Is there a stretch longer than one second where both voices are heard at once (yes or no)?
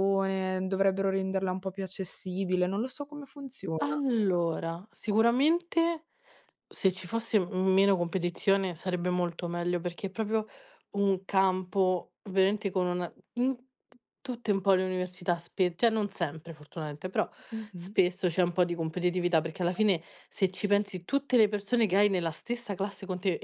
no